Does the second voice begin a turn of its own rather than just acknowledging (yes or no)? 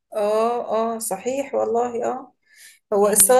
no